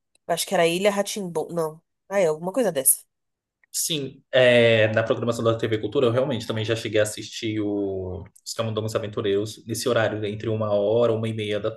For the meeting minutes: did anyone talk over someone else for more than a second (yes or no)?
no